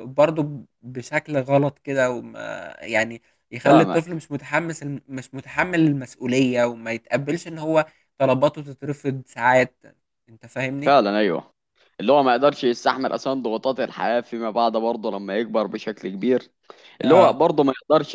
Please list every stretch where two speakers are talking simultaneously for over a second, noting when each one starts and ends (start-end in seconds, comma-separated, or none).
none